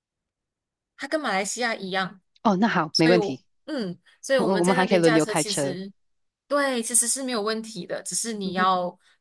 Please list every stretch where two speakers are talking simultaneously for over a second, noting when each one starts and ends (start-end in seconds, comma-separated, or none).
4.4-5.8